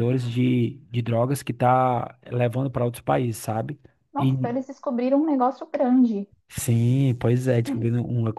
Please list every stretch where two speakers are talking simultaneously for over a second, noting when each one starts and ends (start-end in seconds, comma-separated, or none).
none